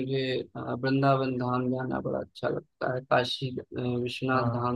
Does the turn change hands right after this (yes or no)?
no